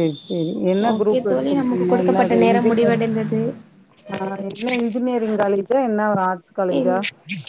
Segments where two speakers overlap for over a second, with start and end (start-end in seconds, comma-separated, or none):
0.9-3.0